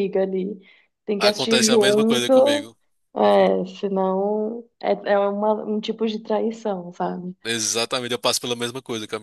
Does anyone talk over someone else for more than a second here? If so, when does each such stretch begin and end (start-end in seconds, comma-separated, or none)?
1.2-2.7